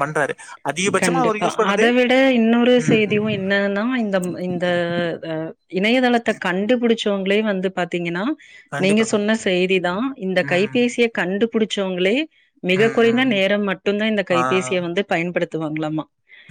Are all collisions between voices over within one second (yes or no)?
yes